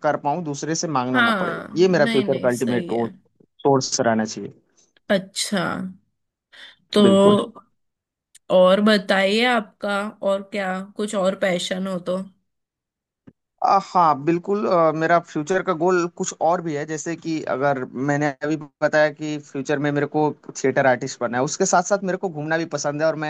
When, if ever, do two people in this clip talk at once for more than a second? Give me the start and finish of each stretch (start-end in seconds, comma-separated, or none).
1.1-2.9